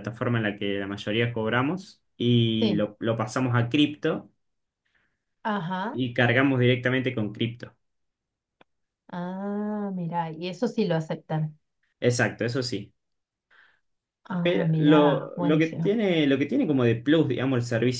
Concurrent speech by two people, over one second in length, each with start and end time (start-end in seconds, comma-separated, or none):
14.4-16.0